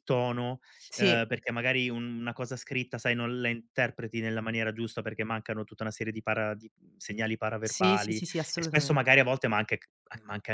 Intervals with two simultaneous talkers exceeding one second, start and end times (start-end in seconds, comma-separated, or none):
7.6-9.0